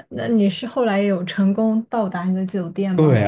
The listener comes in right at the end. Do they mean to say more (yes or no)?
yes